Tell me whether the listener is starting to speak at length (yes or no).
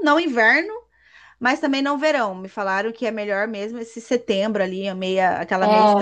yes